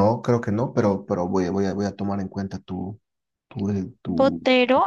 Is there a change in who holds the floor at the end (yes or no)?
yes